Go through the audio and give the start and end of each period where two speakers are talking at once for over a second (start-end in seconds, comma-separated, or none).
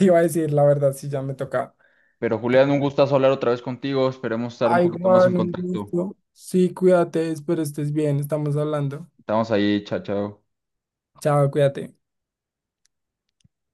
4.6-5.9